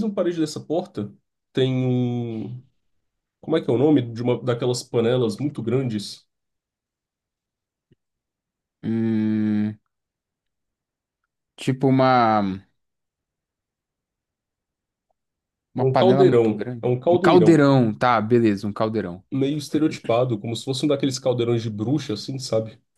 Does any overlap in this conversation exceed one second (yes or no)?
yes